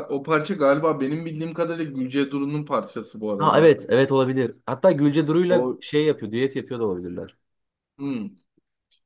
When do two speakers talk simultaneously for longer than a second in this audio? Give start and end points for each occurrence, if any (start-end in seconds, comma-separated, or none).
none